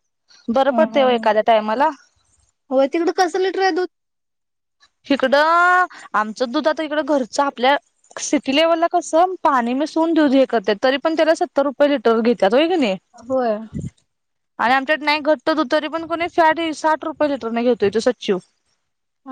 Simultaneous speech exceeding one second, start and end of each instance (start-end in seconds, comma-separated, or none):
none